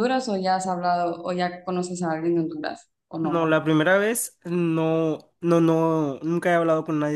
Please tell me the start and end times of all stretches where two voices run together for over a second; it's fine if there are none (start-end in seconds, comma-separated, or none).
none